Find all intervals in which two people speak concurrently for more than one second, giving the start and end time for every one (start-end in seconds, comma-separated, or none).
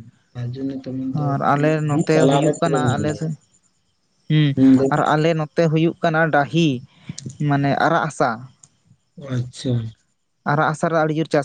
1.1-3.3